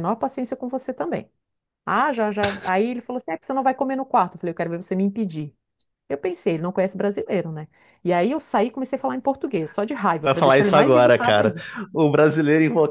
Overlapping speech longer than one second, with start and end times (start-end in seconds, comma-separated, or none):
10.2-11.6